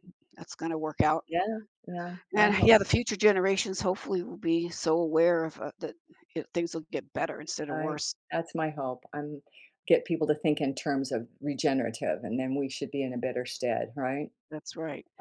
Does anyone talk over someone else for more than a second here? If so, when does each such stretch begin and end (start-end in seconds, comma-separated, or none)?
none